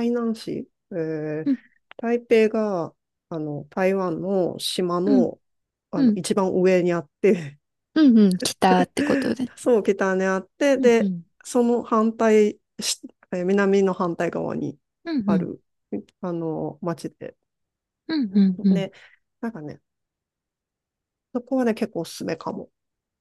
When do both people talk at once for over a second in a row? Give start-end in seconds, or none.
none